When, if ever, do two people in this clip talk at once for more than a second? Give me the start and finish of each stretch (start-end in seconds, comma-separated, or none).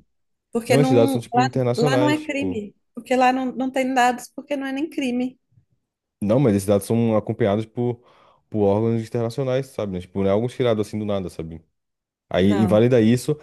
0.7-2.6